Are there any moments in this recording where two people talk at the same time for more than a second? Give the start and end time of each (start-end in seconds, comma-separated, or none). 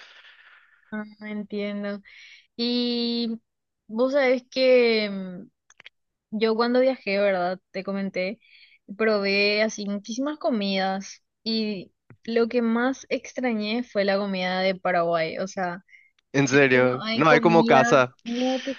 16.7-18.1